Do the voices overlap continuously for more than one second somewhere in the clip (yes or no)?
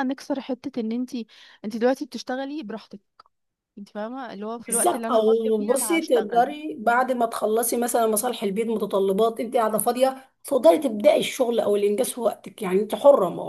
yes